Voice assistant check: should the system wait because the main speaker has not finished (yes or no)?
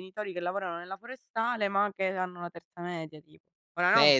no